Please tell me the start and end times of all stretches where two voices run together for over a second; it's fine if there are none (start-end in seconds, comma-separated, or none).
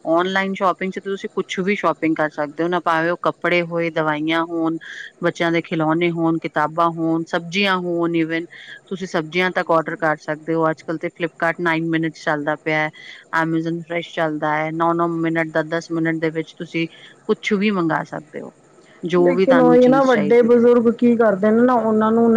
19.2-20.6